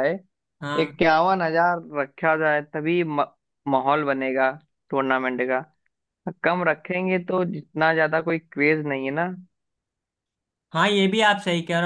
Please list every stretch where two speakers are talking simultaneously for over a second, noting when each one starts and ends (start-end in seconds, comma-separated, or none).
none